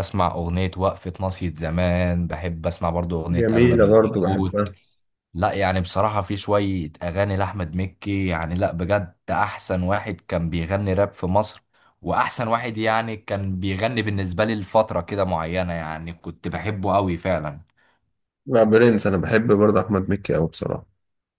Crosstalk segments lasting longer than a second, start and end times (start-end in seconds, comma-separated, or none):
3.3-4.6